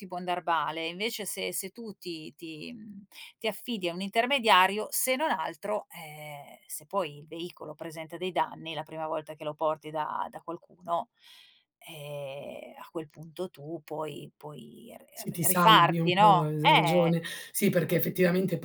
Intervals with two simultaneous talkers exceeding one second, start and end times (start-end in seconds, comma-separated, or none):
15.1-17.2